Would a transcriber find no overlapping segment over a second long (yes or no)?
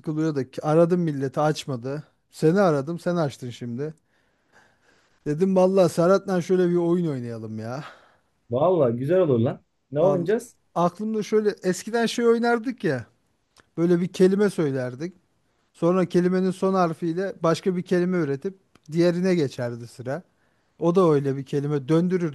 yes